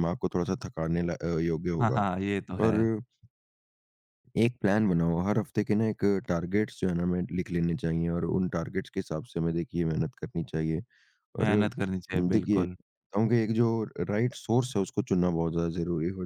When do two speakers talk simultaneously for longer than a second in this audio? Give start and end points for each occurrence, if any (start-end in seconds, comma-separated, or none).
11.4-12.8